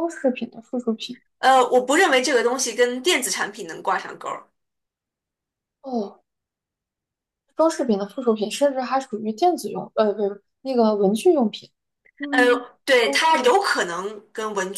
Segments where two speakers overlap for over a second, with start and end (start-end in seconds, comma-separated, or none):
none